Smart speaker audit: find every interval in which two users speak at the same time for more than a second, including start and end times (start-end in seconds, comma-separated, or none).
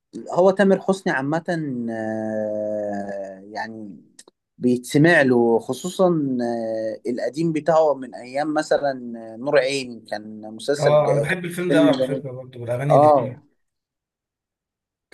10.8-12.2